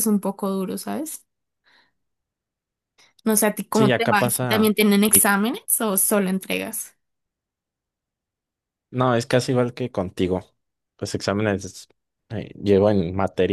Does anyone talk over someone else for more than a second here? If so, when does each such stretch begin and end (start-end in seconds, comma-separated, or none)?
3.7-5.3